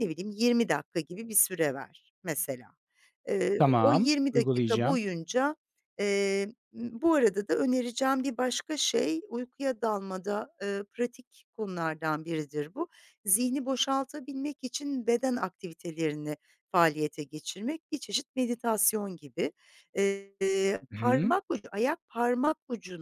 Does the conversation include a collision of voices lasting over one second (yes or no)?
yes